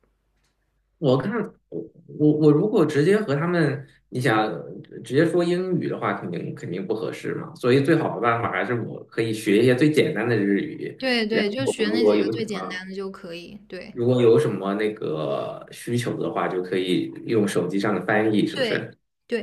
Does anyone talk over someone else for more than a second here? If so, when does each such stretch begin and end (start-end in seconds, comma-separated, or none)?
11.0-12.8